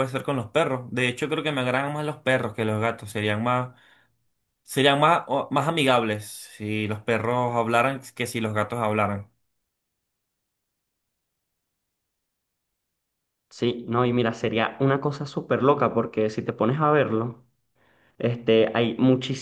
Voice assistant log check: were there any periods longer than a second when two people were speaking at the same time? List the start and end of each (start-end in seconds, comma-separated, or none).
none